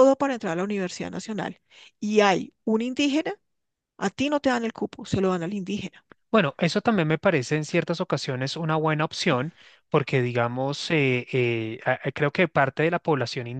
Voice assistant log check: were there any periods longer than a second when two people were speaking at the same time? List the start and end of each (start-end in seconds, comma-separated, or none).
none